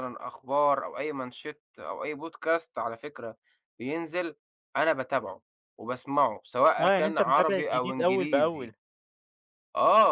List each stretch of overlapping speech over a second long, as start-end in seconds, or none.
6.8-8.7